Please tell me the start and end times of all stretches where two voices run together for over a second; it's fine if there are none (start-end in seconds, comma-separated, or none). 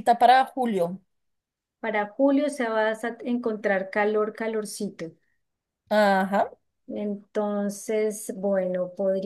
none